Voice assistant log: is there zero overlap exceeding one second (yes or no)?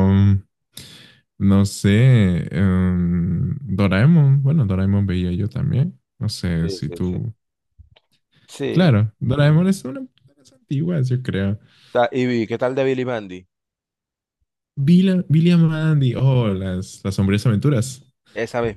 yes